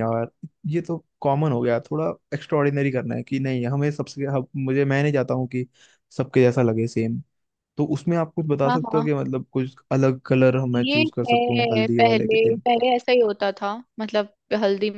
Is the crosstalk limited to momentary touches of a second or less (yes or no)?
no